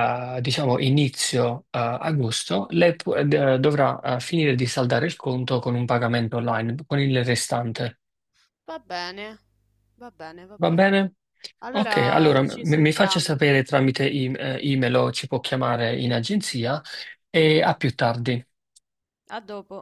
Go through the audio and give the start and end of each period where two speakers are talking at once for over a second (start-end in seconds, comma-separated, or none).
11.7-13.3